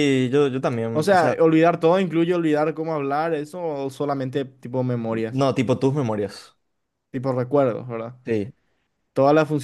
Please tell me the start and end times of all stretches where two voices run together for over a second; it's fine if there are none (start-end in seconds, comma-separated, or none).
none